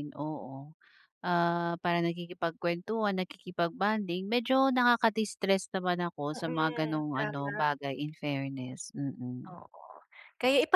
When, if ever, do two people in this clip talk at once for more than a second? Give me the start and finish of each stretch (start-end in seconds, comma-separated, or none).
6.3-7.6